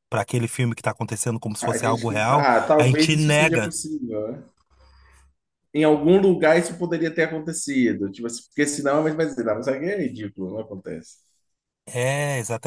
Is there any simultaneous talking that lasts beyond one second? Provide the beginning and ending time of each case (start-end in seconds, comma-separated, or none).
1.6-3.7